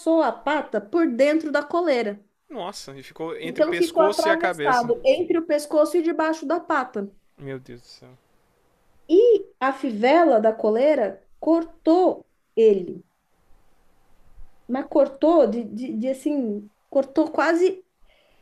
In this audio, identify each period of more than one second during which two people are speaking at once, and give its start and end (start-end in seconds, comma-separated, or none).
3.4-4.9